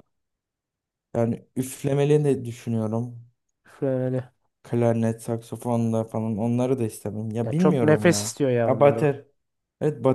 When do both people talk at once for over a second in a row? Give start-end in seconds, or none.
7.4-9.1